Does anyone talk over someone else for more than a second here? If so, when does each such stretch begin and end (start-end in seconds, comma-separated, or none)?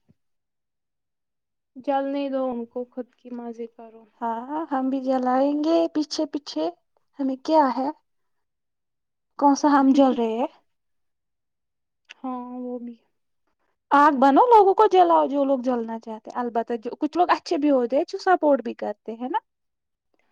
none